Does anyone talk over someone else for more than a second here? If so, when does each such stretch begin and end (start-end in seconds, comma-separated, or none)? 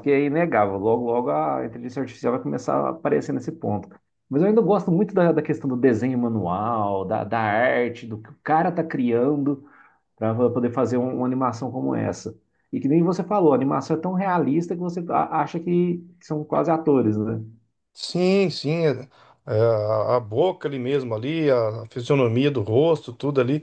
none